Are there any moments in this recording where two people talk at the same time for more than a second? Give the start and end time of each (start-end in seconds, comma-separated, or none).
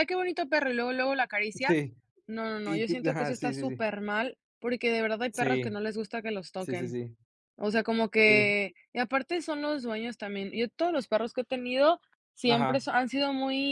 2.6-3.9